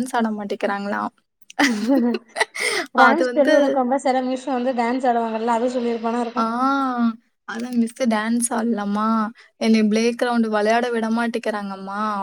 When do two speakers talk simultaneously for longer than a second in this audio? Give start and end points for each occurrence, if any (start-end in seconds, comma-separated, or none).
none